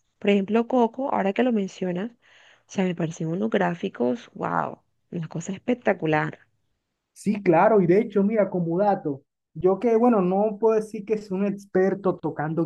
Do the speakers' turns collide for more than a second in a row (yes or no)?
no